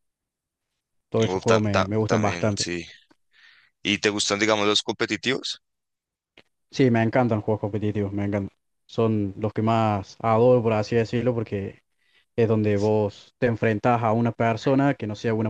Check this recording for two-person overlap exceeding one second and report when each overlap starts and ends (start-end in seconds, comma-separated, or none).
1.3-2.7